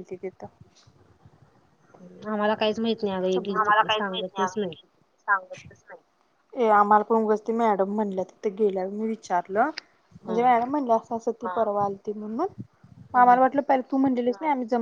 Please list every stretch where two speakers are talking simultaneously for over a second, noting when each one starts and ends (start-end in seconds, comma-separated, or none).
none